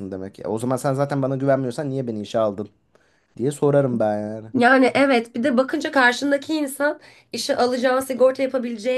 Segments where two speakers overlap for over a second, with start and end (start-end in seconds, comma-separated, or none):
none